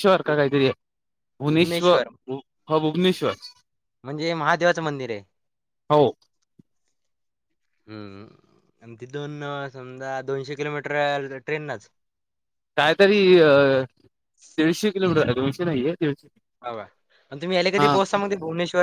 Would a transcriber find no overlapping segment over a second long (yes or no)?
yes